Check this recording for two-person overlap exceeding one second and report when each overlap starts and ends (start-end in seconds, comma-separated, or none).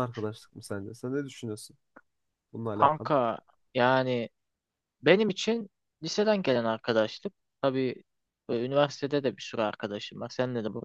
none